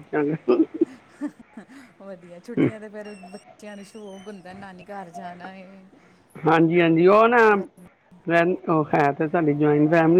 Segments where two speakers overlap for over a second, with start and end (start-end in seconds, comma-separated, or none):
none